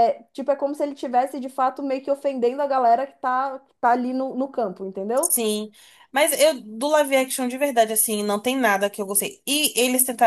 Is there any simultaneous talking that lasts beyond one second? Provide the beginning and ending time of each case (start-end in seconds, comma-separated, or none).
none